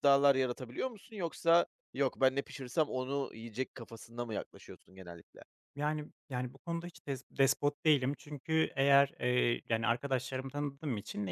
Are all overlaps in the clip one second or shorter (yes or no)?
yes